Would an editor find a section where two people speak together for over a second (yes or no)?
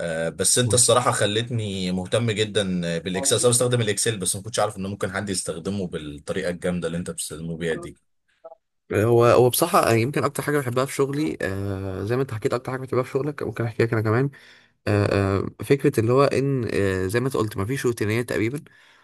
no